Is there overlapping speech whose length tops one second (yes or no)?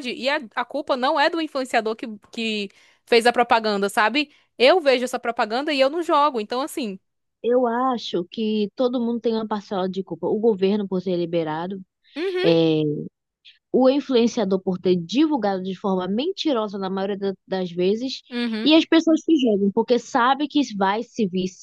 no